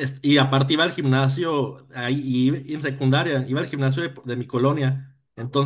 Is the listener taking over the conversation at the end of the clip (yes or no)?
no